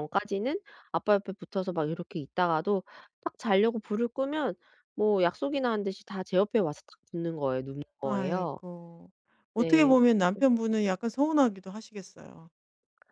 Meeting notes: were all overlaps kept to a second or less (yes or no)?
yes